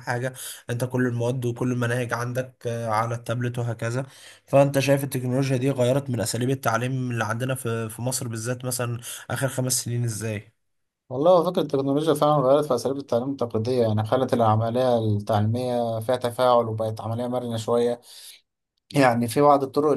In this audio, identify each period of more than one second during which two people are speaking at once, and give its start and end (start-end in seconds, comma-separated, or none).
none